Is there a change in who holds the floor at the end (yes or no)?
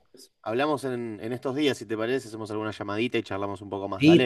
yes